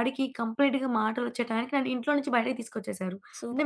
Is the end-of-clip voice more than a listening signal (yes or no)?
yes